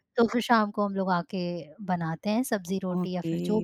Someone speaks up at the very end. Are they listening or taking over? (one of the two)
taking over